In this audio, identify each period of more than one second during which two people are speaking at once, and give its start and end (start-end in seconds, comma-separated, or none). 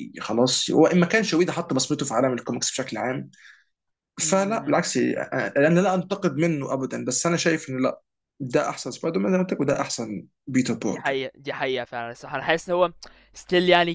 none